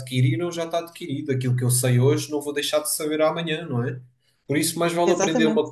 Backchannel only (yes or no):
yes